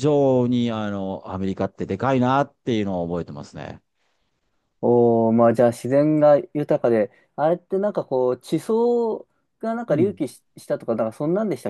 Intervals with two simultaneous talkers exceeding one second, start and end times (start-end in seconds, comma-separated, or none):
none